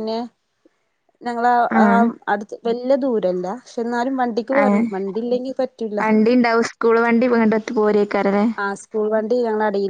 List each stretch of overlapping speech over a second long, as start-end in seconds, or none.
none